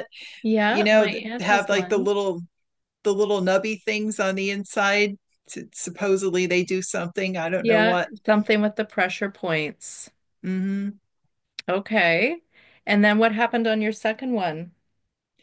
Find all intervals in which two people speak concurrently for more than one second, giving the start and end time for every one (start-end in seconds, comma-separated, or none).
0.7-2.1